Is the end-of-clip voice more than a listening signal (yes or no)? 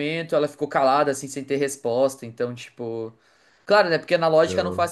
no